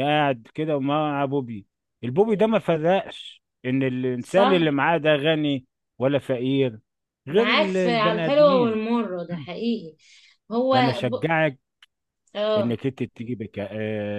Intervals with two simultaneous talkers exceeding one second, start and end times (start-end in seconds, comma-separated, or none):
7.3-8.8